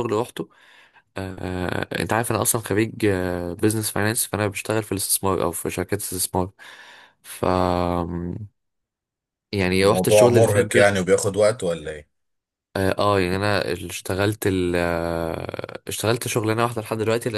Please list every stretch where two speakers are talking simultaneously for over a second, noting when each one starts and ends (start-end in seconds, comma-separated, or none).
9.8-11.0